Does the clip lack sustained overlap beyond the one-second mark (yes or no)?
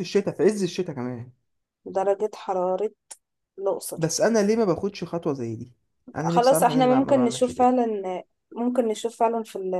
no